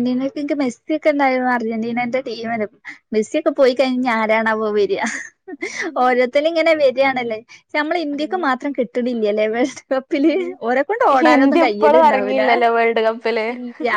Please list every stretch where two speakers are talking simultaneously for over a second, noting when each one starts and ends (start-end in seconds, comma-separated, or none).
11.2-12.4